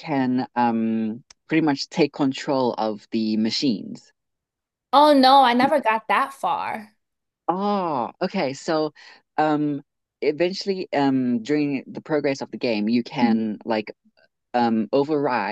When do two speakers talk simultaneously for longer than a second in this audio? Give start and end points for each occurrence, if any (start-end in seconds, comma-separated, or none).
none